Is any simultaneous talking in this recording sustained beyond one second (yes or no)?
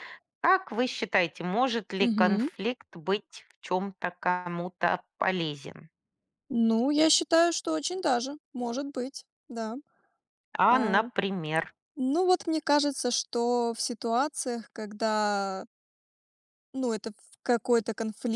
no